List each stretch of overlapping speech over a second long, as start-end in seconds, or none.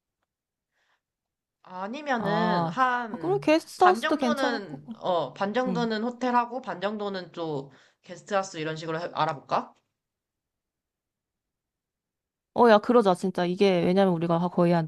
2.2-5.0